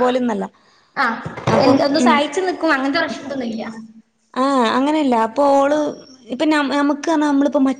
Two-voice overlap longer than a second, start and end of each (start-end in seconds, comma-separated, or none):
none